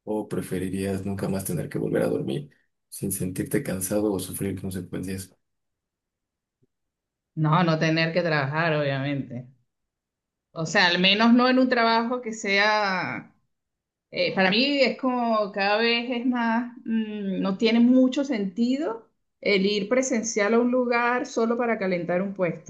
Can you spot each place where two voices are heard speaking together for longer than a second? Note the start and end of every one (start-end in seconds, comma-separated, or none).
none